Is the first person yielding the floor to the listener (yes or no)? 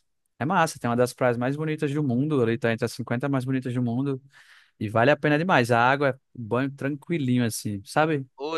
yes